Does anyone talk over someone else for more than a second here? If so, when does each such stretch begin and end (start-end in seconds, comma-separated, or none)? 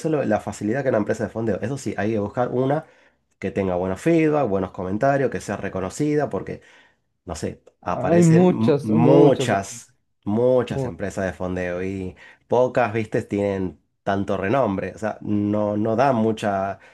8.1-9.6